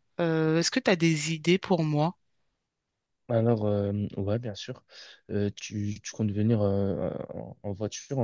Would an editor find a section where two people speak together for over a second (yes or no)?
no